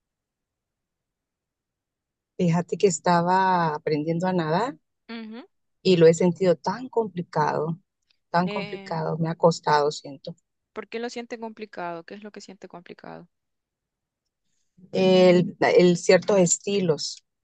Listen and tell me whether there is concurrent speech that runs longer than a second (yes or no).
no